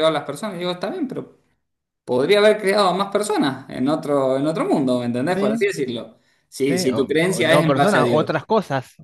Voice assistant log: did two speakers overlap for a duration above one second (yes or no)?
yes